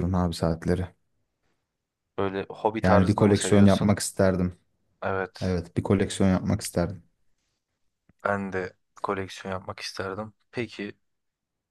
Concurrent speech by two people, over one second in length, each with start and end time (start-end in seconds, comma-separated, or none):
2.8-4.0